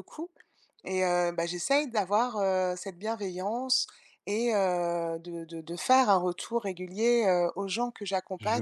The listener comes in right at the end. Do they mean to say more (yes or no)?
no